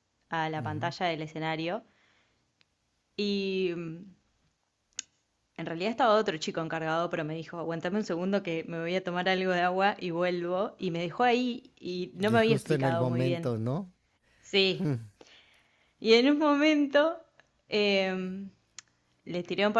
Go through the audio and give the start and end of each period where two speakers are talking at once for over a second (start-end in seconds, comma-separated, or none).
12.2-13.5